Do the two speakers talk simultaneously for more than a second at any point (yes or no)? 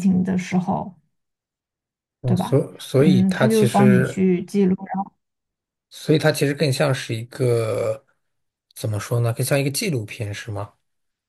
yes